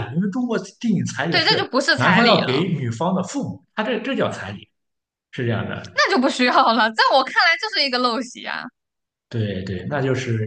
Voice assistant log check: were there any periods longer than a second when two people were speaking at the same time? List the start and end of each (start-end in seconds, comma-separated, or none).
1.3-2.7